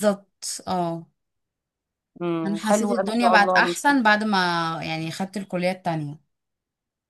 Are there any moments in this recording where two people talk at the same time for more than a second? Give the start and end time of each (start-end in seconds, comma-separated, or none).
2.5-4.0